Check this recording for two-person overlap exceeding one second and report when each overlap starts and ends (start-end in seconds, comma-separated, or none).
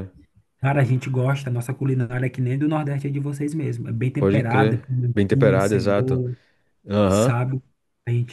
4.2-6.2